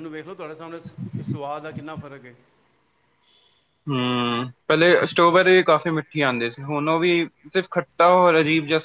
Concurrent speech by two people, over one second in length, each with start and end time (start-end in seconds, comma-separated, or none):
none